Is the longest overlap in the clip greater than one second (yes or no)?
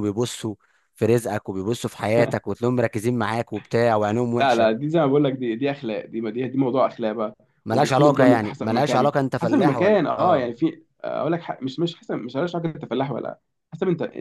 yes